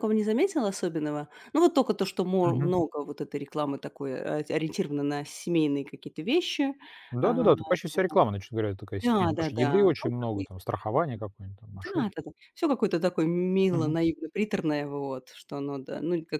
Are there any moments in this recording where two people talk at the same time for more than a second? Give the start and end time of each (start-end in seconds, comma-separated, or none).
9.0-10.5